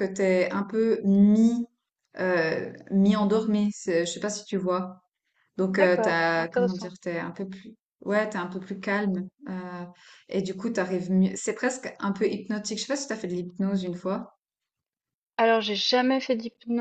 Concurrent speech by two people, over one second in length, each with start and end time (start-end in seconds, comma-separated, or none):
5.7-6.9